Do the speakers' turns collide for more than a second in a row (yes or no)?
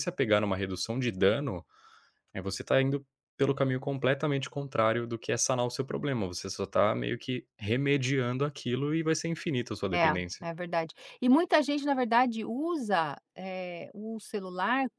no